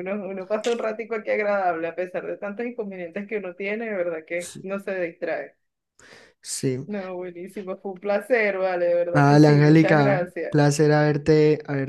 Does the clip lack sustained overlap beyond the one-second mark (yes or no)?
no